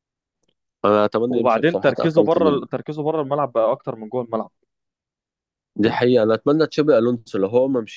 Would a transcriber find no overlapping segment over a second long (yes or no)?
no